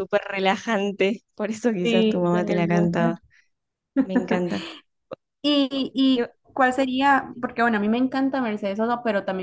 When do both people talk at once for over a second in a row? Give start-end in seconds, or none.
1.8-3.2